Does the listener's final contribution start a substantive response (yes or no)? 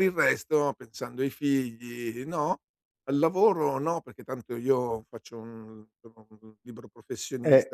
yes